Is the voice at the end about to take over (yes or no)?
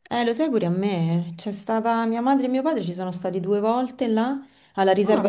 no